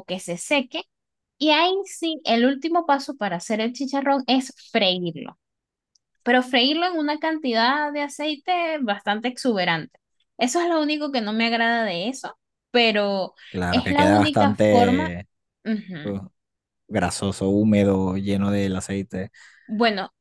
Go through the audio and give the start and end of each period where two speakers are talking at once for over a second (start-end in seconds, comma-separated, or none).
13.7-15.2